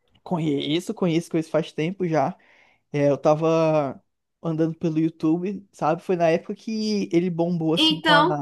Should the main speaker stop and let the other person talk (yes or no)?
no